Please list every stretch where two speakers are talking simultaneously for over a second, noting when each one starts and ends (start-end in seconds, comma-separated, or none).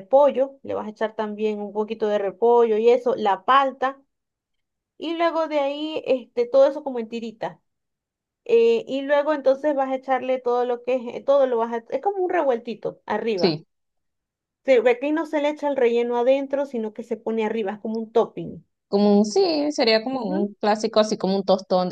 none